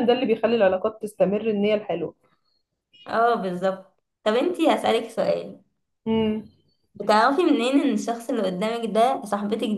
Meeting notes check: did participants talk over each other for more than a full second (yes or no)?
no